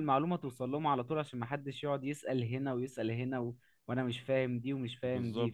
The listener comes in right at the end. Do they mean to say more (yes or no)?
no